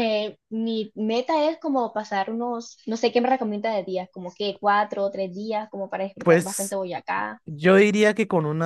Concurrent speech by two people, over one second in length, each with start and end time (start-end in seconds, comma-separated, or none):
none